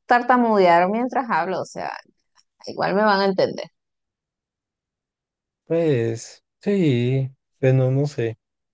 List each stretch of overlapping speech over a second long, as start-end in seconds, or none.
none